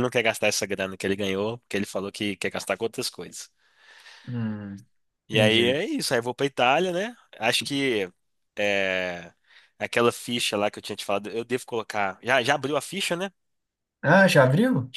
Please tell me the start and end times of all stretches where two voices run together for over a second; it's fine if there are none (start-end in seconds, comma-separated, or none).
none